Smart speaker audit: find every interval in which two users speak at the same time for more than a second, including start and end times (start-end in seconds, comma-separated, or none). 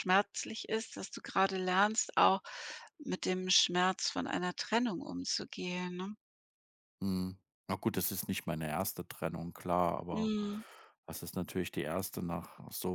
none